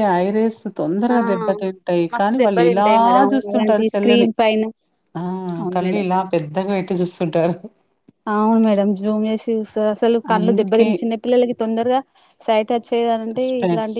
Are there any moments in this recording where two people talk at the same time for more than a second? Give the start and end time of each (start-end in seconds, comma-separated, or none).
2.1-4.3